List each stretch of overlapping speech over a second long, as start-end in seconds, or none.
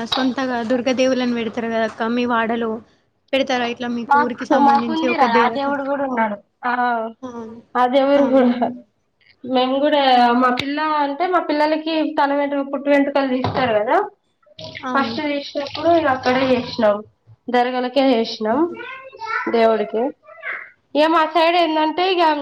none